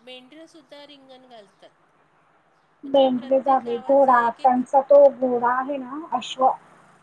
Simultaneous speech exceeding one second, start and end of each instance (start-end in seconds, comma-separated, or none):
2.9-4.5